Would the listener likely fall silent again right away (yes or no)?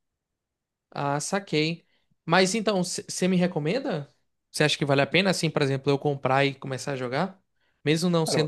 yes